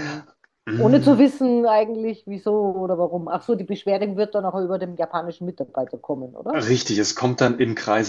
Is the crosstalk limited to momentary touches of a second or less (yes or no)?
yes